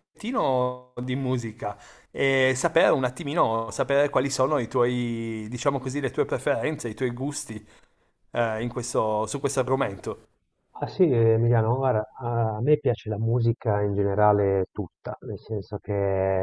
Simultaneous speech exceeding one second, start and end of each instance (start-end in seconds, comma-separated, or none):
none